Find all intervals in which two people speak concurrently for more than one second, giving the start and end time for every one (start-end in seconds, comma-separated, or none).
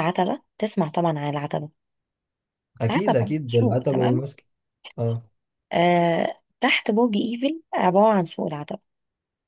2.9-4.3